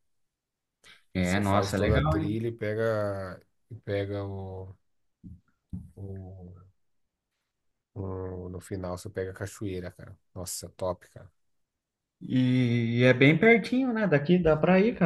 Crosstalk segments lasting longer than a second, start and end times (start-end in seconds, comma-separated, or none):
1.2-2.4